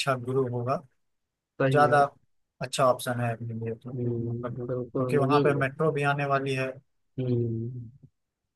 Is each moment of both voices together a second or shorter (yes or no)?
no